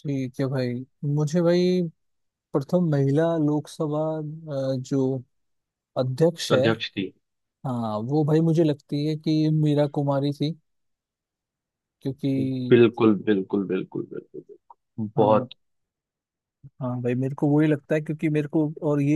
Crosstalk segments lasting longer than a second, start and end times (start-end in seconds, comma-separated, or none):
none